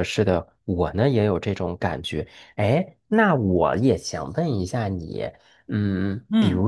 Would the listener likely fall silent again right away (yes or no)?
yes